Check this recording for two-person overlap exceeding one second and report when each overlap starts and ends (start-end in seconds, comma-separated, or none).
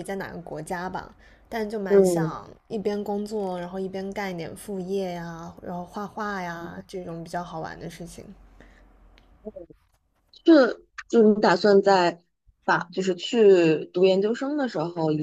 none